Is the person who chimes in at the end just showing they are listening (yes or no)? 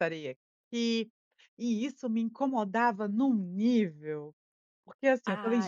yes